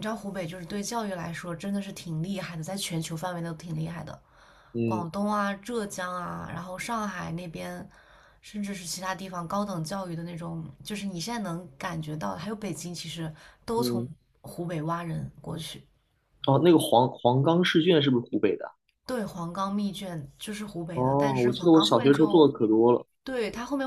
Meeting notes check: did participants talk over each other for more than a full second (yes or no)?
yes